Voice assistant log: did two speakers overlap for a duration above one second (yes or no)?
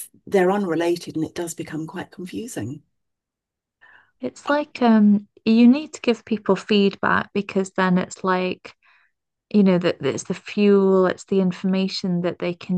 no